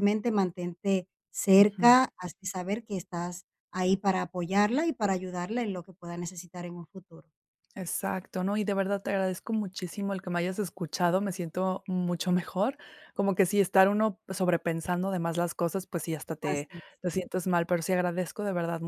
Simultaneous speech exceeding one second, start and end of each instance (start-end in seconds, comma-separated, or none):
none